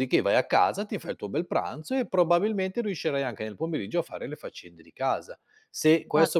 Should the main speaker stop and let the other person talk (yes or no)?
no